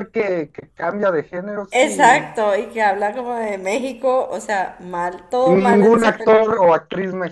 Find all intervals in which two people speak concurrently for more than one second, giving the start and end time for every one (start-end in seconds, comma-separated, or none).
5.4-6.6